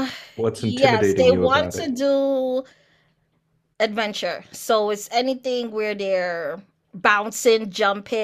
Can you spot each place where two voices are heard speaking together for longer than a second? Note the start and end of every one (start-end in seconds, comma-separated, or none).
0.5-1.9